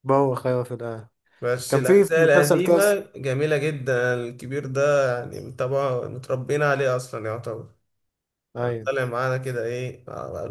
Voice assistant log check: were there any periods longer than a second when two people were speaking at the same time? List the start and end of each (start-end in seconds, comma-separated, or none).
1.7-3.0